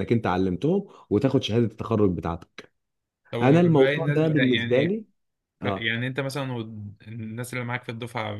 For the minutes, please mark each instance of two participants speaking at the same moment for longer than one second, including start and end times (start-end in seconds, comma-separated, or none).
3.4-4.9